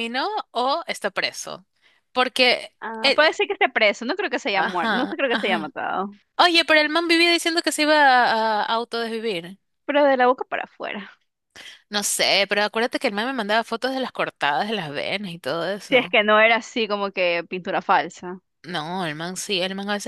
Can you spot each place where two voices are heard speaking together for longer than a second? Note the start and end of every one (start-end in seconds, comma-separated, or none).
4.5-5.7